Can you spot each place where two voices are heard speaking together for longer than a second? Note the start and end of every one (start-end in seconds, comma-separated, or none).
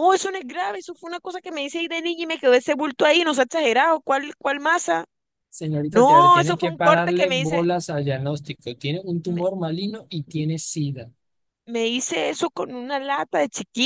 5.9-7.7